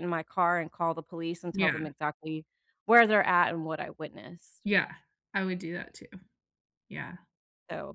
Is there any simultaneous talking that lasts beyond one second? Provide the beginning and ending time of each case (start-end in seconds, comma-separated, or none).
none